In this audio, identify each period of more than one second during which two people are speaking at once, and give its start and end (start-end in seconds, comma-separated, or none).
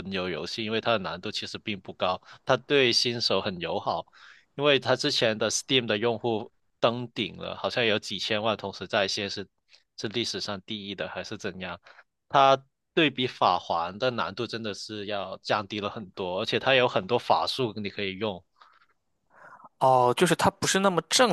none